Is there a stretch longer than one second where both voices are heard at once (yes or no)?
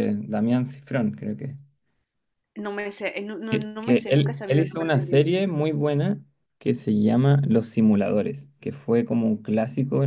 yes